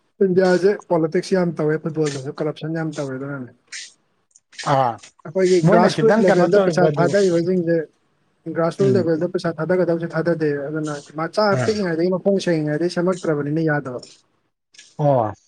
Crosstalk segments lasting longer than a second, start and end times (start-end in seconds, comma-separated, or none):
5.6-7.1